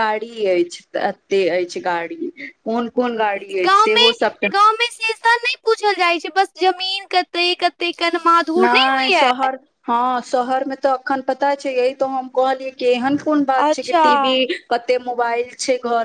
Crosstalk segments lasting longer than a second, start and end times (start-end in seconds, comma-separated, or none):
none